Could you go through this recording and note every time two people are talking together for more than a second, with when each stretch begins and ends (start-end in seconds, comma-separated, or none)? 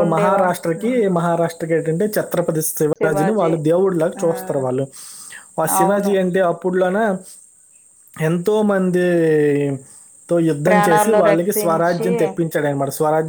10.7-12.1